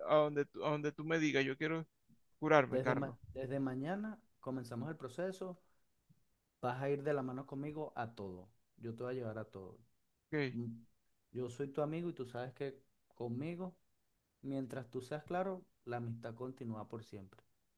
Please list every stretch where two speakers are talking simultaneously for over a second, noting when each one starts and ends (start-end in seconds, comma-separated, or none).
none